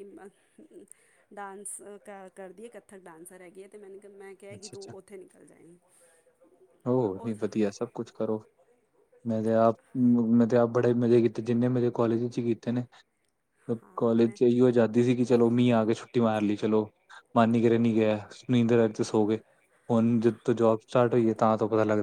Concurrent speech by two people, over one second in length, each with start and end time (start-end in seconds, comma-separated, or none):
none